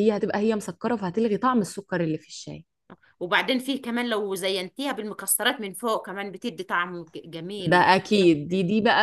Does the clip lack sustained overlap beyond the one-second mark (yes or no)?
yes